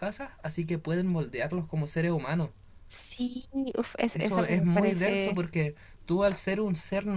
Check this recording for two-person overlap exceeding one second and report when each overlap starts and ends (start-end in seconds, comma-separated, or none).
4.1-5.4